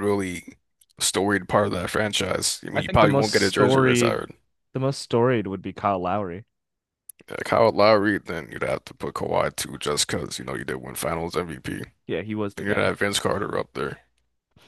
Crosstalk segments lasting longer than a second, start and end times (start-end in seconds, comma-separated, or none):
2.7-4.2